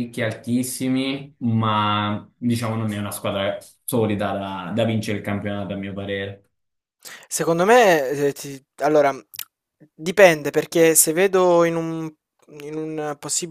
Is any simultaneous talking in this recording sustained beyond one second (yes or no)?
no